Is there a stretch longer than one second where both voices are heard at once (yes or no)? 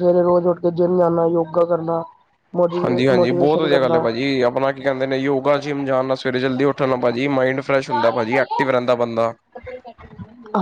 yes